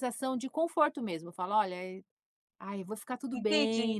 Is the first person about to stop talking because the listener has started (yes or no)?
yes